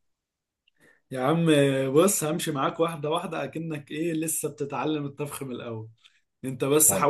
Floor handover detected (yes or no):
no